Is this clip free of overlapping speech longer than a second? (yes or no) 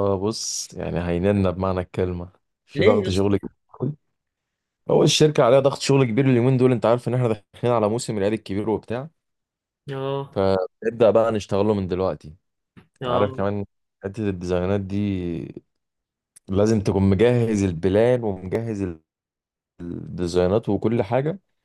yes